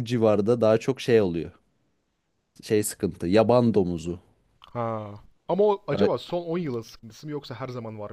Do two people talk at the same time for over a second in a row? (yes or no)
no